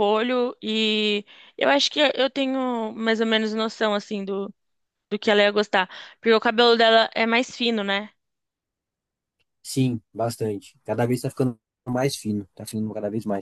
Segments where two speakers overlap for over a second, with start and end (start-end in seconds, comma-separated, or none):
none